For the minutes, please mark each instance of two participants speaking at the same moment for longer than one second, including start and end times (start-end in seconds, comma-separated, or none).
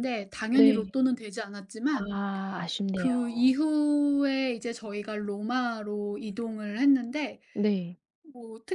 none